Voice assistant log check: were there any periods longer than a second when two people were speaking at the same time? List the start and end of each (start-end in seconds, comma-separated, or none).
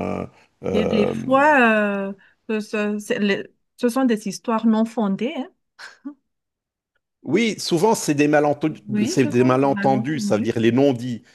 8.9-10.5